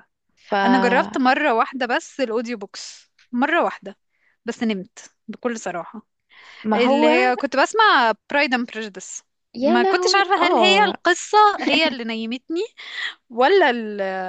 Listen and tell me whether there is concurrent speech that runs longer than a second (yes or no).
yes